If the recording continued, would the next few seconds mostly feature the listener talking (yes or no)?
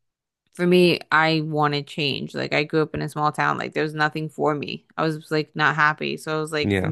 no